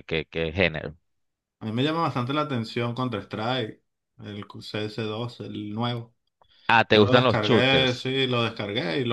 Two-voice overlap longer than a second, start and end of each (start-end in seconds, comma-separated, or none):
6.9-8.1